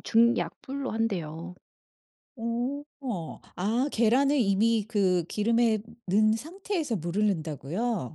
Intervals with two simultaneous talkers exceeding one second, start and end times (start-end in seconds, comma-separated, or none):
none